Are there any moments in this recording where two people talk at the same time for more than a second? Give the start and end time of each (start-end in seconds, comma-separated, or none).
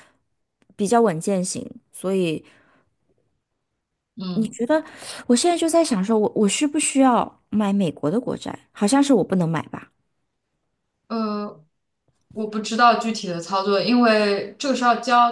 none